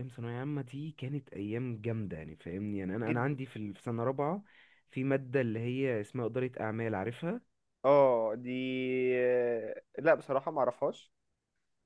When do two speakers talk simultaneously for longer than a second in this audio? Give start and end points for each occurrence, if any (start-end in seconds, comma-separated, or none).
none